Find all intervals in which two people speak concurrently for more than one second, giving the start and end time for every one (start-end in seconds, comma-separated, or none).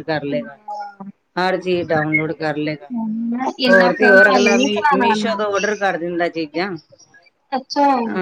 3.7-5.4